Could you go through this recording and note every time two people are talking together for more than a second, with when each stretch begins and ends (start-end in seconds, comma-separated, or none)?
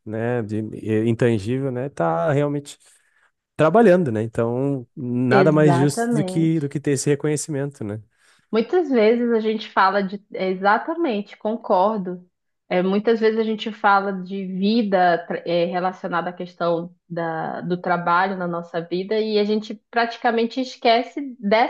5.3-6.6